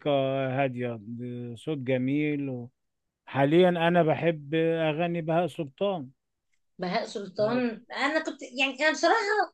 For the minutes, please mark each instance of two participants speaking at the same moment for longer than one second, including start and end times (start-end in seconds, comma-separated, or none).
none